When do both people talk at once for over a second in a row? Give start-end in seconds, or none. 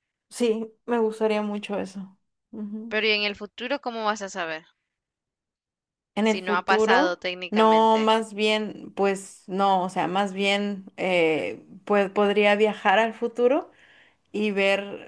6.2-8.1